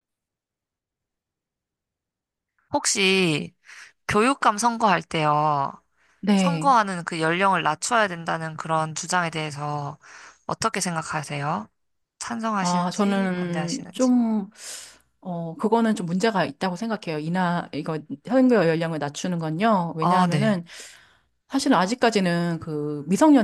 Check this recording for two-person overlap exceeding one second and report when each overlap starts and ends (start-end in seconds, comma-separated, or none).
12.6-14.1